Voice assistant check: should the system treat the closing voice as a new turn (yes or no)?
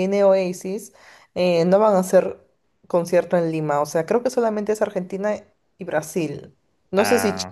no